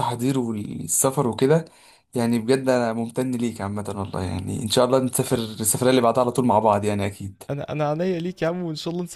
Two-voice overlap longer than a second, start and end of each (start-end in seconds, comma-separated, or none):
none